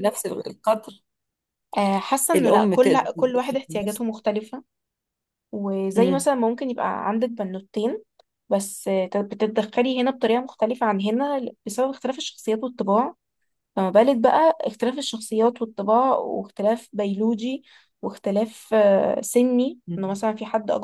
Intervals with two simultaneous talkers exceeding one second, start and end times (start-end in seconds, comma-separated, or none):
2.4-4.0